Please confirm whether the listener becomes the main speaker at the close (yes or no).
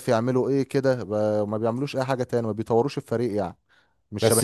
yes